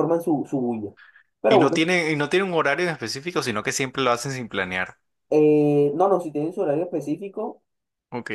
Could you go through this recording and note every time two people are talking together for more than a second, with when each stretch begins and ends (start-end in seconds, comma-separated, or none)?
none